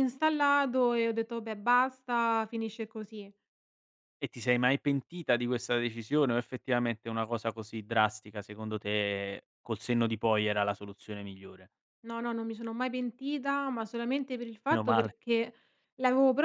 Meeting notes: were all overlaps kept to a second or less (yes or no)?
yes